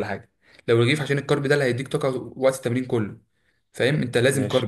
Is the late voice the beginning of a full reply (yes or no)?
no